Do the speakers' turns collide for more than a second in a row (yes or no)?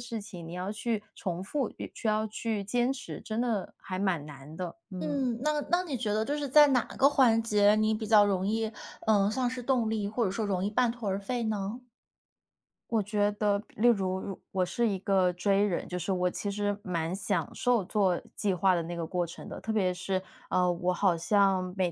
no